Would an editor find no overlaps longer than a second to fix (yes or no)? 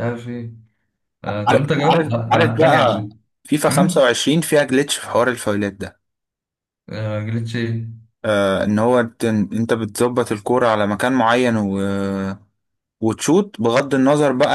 no